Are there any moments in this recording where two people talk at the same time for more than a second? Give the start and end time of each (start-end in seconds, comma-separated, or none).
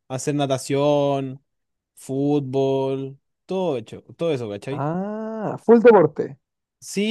none